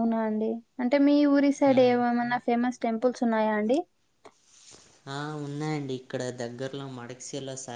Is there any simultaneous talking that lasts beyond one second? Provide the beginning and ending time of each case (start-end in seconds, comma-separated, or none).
none